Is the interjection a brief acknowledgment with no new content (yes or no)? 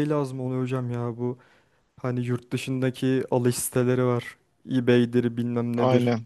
yes